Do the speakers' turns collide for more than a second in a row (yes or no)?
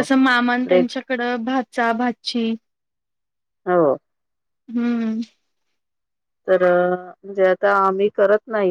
no